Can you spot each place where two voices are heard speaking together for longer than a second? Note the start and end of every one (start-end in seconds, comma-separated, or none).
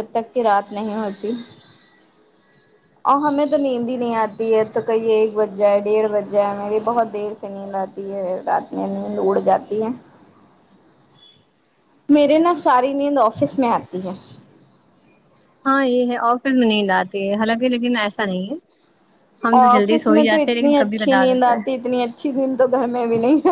19.6-21.7